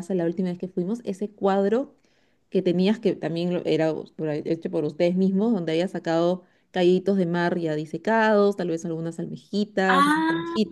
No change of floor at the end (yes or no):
yes